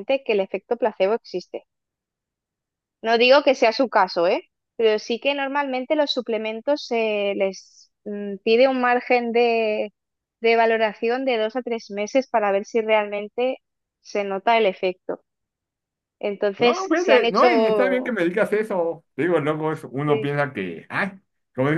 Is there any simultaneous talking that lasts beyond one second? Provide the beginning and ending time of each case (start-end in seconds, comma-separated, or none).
16.6-18.2